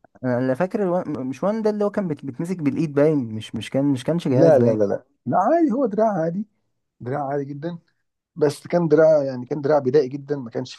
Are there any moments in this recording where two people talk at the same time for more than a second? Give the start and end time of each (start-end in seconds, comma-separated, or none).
none